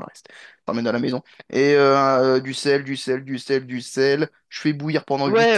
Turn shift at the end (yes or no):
yes